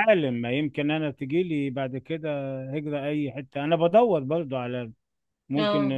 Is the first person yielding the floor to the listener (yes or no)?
no